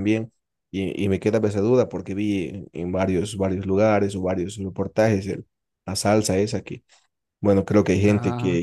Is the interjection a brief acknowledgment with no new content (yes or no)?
yes